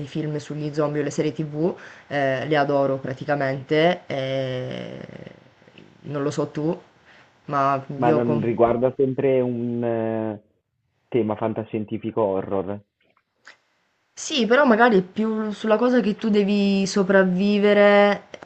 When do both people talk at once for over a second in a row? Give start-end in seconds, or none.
none